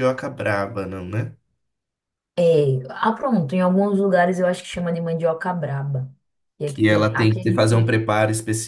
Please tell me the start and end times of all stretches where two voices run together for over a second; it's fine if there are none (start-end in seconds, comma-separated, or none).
6.7-7.9